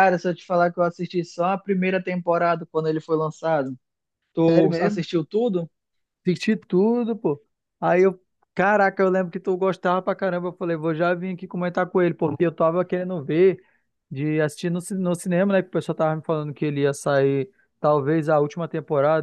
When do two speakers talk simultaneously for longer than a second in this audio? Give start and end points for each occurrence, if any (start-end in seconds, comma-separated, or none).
none